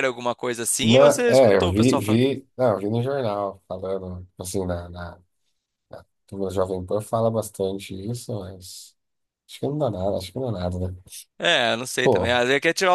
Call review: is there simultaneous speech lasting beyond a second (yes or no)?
yes